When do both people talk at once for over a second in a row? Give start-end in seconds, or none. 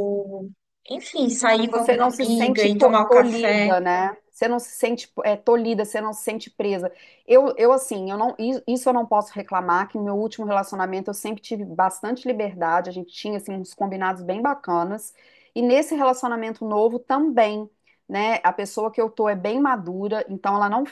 1.7-3.7